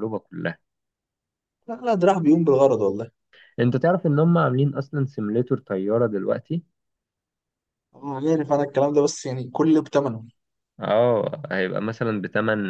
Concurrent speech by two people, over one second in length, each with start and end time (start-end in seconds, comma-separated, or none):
none